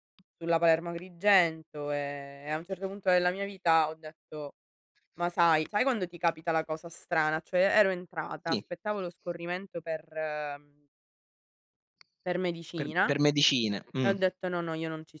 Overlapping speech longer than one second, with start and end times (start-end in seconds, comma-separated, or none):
none